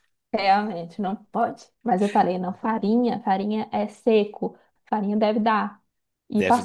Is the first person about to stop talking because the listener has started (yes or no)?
no